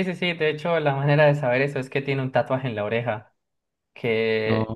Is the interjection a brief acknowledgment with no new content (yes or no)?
yes